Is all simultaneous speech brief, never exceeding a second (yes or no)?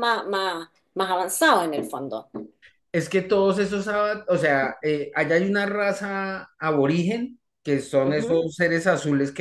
yes